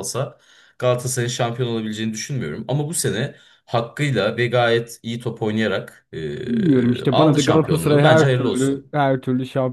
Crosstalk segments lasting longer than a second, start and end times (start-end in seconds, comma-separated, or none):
6.5-8.9